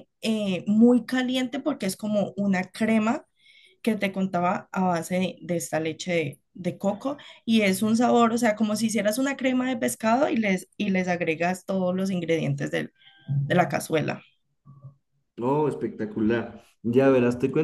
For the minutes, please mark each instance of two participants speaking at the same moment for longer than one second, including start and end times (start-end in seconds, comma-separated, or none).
none